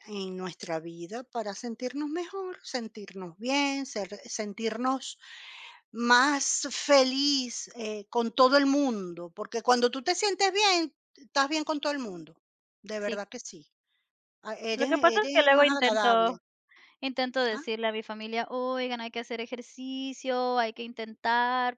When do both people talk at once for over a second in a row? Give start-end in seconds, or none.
14.7-16.4